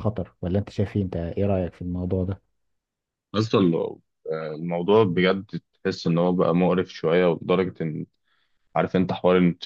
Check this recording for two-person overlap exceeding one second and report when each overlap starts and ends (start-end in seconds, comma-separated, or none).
none